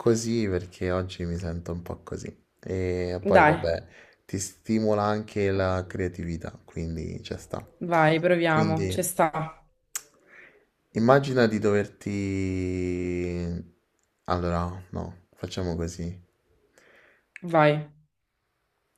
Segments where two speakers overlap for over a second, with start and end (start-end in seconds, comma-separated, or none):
none